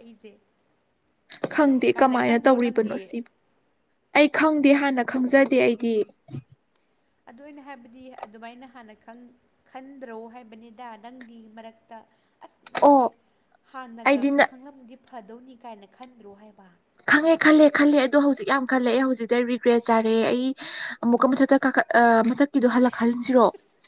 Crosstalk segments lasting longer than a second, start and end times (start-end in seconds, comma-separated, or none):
1.9-3.2